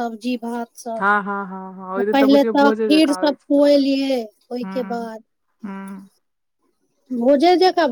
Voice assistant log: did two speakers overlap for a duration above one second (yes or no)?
yes